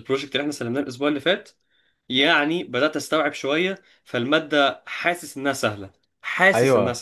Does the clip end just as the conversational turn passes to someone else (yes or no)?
yes